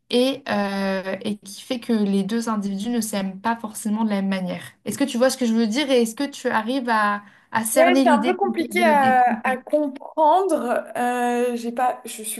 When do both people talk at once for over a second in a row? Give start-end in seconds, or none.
7.7-9.6